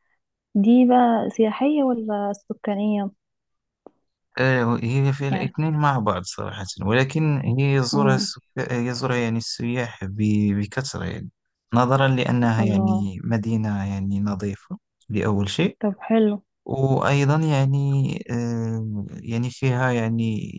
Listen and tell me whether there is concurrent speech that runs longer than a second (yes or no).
no